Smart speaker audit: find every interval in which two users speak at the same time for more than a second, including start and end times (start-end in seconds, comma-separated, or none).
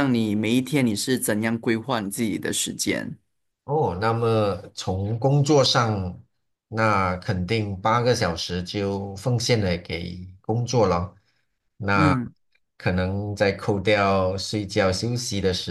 none